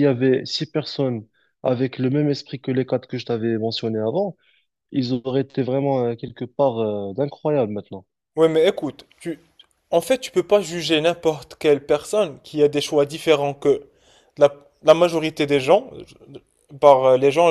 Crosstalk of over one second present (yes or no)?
no